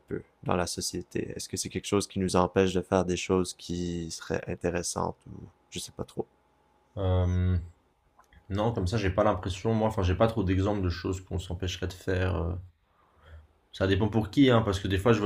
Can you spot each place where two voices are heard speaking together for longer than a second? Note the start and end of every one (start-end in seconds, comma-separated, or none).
none